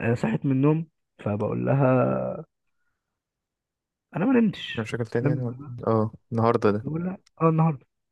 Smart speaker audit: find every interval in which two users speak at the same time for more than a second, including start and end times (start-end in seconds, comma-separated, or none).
none